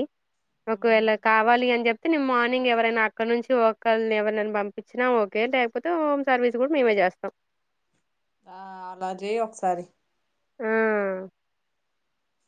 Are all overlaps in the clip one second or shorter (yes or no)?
yes